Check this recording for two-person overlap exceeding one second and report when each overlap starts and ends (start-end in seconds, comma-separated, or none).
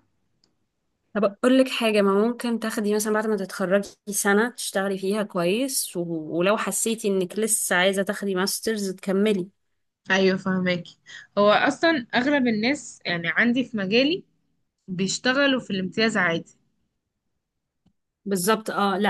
none